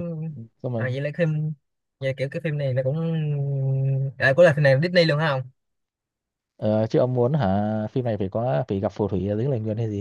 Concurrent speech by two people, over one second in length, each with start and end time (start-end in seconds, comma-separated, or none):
none